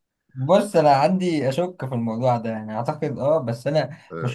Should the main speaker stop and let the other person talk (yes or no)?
no